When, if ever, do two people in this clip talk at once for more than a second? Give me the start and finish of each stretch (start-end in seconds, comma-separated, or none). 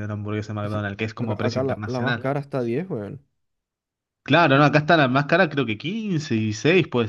0.6-2.3